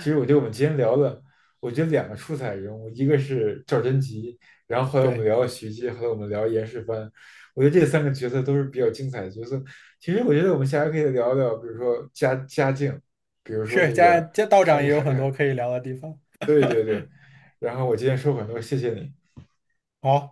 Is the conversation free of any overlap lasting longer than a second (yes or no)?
no